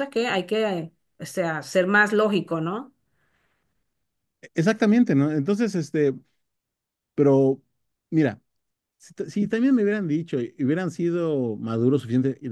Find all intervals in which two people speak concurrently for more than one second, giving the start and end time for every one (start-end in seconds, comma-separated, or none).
none